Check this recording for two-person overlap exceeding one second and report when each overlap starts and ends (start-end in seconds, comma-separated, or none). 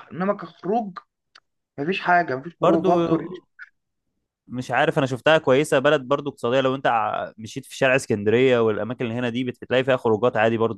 none